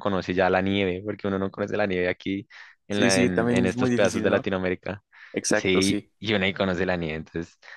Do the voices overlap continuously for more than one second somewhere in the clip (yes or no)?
yes